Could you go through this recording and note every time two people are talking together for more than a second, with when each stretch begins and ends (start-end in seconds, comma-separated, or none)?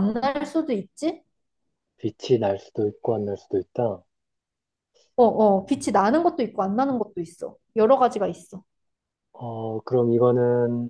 none